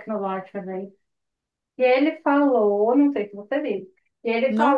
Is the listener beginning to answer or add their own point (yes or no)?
no